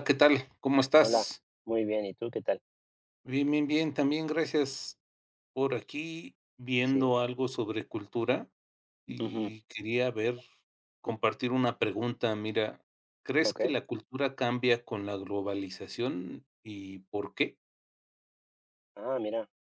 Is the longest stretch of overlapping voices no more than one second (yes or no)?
yes